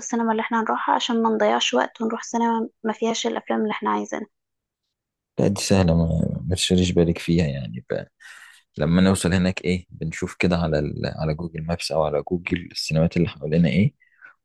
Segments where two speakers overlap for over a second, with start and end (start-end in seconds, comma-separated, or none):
none